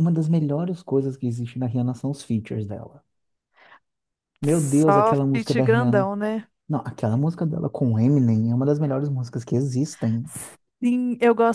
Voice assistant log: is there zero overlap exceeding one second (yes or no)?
no